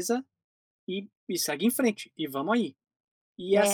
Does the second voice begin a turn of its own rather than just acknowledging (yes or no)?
no